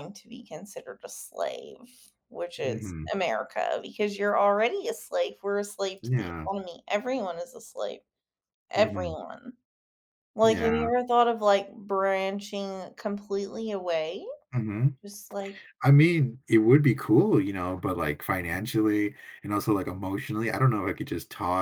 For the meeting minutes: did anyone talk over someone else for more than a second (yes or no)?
no